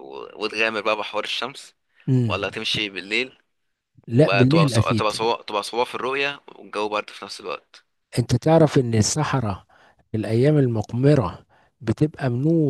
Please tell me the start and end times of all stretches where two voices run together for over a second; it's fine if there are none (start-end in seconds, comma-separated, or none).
4.1-5.3